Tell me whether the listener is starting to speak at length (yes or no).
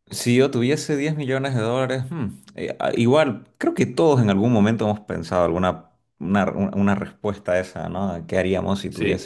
no